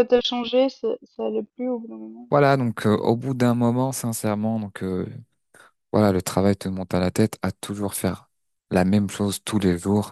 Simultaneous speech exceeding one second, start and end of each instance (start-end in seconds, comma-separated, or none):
none